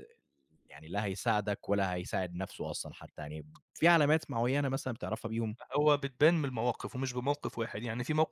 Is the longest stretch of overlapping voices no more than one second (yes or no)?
yes